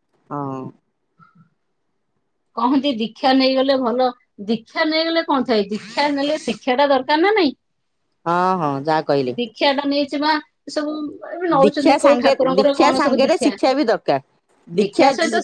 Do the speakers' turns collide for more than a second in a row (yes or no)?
yes